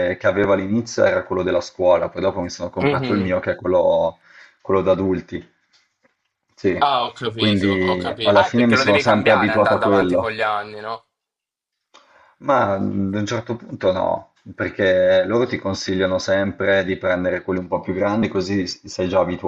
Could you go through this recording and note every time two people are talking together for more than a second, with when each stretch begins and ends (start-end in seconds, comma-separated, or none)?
7.3-10.3